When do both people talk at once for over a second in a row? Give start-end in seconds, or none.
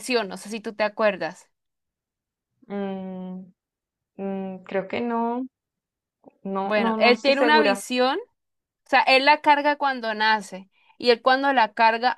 6.6-7.8